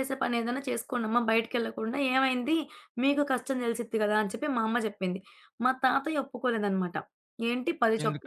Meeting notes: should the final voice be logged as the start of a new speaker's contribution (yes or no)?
no